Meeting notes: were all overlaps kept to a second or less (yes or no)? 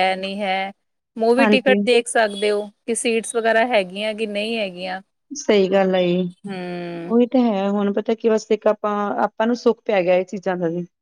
yes